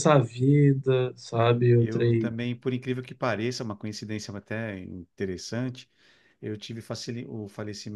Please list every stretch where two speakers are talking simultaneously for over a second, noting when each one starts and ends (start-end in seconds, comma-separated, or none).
none